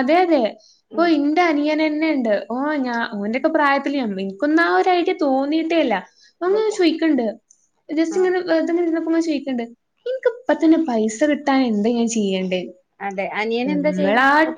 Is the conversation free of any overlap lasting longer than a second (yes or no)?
yes